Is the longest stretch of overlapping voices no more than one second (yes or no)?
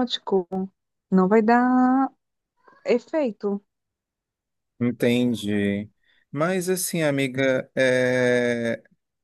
yes